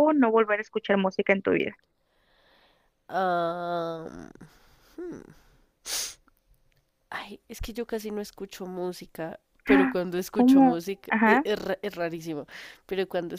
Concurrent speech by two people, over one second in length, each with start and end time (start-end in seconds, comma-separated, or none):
9.7-11.4